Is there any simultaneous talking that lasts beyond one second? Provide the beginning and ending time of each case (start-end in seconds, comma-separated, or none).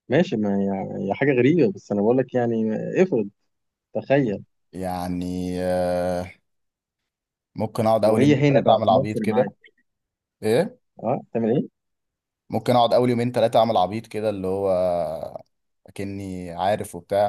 8.0-9.4